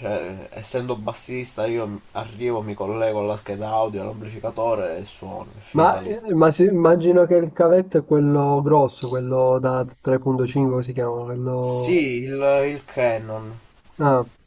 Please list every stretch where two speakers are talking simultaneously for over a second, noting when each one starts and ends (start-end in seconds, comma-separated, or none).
none